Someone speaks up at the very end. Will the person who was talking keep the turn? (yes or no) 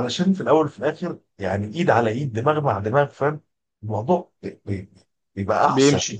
yes